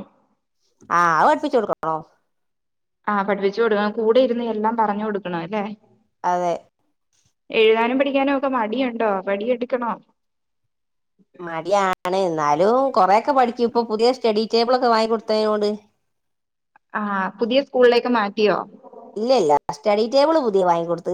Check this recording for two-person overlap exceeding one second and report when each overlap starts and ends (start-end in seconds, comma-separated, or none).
none